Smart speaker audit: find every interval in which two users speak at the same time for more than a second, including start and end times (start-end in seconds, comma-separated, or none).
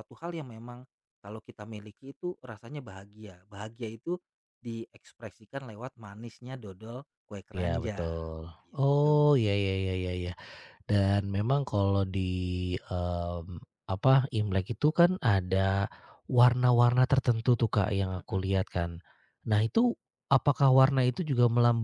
7.5-9.2